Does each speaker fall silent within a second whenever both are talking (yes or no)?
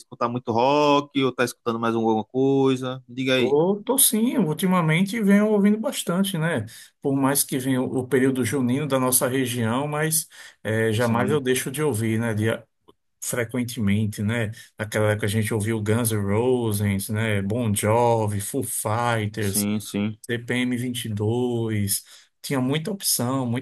yes